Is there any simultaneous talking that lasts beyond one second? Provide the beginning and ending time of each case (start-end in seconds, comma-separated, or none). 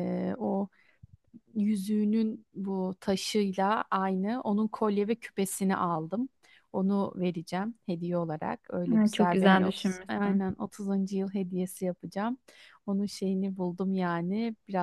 8.9-10.5